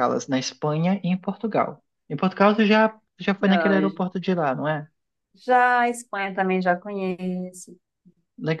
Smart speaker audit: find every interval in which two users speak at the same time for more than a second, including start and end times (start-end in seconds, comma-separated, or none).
none